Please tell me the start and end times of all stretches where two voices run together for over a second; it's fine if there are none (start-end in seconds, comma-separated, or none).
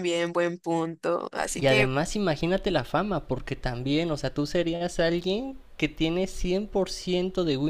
none